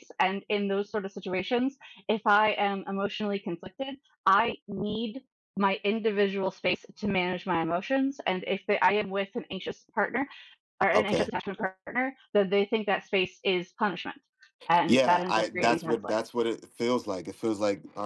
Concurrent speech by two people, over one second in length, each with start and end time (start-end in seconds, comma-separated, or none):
14.9-16.3